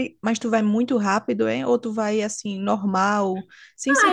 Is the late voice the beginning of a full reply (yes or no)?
yes